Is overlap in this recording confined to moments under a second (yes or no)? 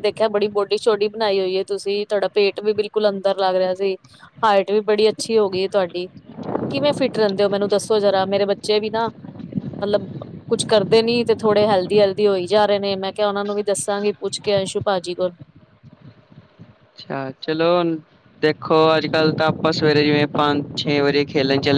yes